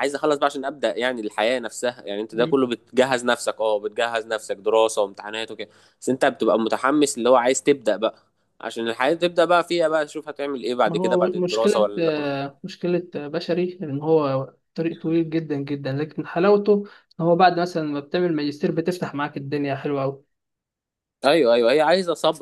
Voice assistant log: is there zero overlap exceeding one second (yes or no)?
no